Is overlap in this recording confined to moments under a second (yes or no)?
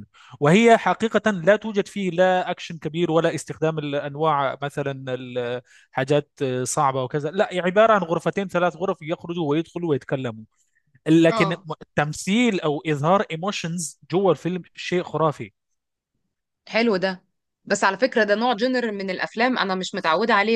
yes